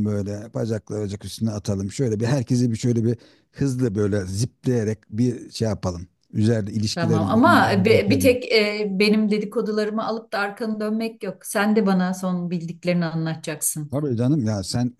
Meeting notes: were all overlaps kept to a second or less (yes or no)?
no